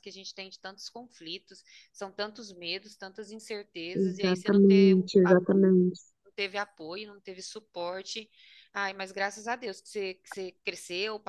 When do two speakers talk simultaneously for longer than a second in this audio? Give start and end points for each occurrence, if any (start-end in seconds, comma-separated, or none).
3.9-5.4